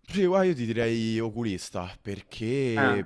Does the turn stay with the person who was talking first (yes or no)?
yes